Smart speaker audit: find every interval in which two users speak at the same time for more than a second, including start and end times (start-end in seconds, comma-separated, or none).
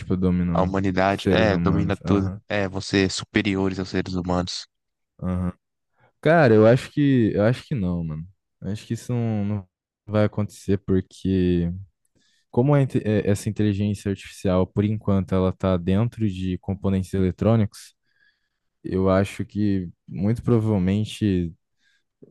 0.5-2.4